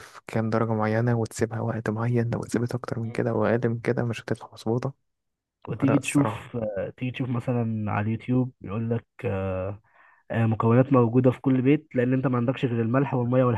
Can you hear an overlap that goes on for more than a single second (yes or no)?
no